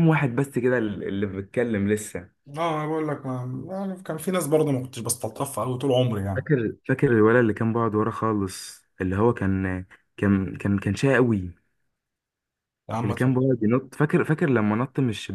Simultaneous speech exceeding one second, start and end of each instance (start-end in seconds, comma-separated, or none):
none